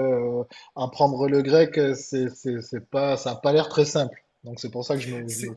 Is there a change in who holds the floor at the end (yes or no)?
yes